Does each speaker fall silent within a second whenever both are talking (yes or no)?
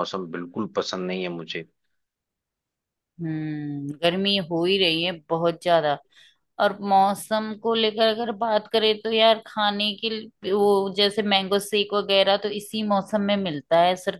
yes